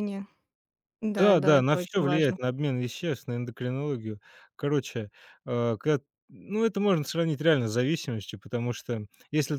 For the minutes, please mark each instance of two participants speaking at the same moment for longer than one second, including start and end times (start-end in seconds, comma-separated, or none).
1.2-2.4